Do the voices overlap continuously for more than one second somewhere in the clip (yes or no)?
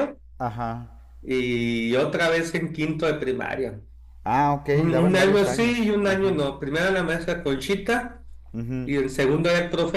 yes